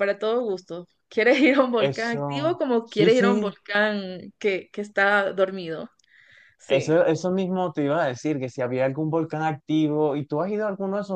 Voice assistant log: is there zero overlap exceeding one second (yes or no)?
no